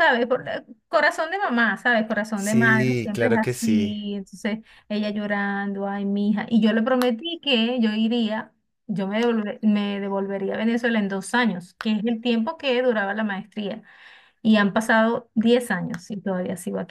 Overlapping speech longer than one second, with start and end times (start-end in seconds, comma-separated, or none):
2.3-4.0